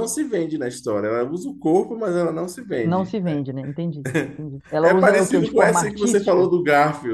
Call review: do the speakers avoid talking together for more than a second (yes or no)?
no